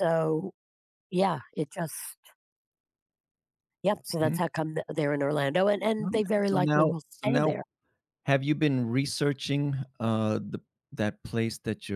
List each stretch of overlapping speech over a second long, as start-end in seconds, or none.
6.0-7.5